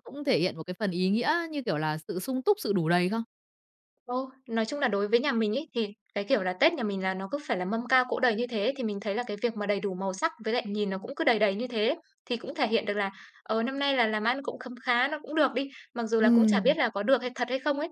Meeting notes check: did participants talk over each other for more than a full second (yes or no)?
no